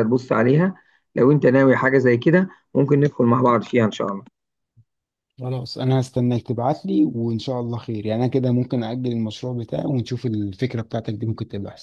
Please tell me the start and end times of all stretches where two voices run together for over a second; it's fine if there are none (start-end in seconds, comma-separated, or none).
none